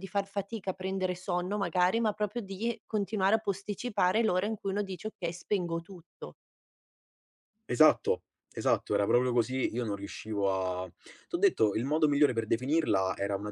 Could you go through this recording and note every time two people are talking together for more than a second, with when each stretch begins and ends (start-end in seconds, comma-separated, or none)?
none